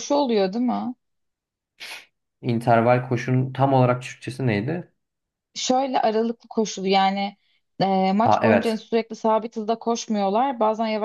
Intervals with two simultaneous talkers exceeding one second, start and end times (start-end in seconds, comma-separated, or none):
none